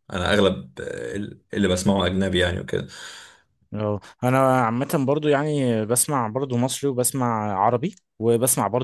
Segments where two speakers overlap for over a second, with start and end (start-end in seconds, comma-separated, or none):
none